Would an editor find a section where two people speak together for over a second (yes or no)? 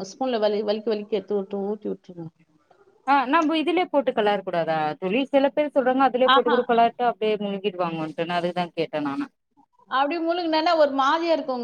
no